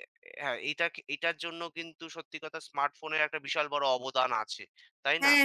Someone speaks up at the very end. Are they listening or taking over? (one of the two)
taking over